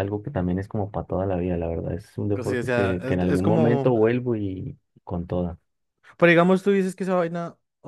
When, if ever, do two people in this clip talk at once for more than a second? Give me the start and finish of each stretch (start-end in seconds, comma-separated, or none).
2.3-3.9